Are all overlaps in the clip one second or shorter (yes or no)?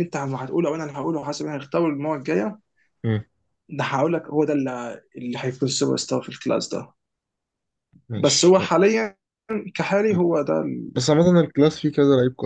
yes